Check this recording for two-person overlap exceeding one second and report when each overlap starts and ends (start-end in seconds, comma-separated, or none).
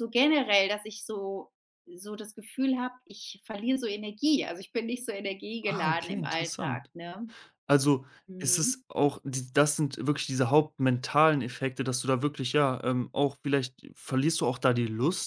5.6-6.9